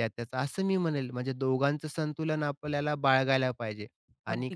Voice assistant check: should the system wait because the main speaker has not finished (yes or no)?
yes